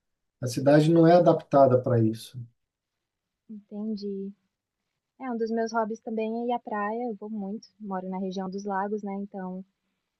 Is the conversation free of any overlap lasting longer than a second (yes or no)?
yes